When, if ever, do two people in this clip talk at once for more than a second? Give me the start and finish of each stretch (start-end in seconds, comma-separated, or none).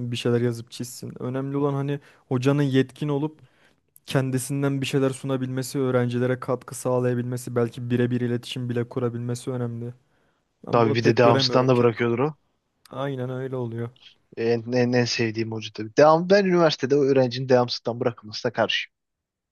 10.7-12.3